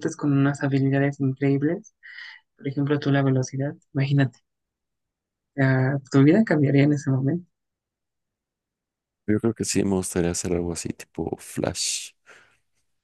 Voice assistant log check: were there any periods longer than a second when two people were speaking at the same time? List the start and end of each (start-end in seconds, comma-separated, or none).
none